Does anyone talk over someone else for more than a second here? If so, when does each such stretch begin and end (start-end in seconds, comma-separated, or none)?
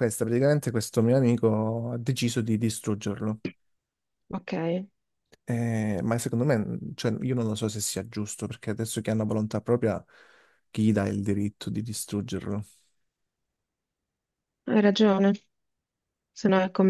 none